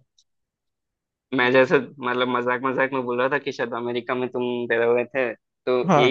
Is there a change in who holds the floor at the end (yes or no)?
no